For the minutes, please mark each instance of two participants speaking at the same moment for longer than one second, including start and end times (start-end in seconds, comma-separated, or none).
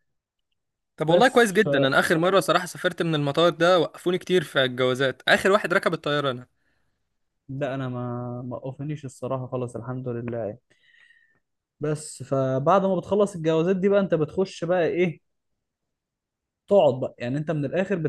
none